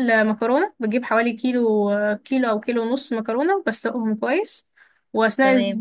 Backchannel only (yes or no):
yes